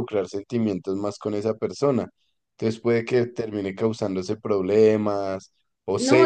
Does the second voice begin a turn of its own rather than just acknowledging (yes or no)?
yes